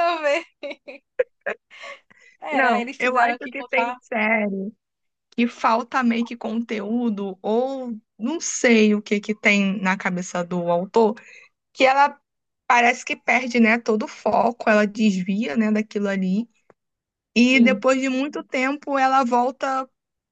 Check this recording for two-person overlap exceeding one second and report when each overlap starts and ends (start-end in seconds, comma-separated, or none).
2.5-3.9